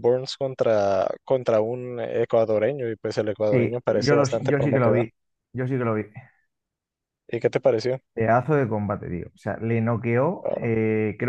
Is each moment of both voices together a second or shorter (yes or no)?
no